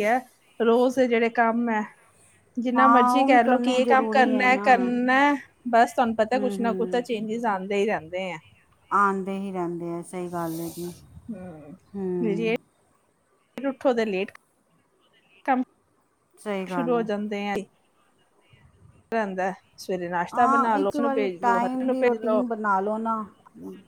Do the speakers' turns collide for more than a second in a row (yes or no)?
yes